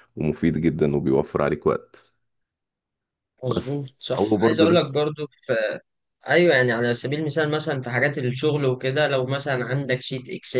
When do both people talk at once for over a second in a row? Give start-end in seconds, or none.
3.4-5.0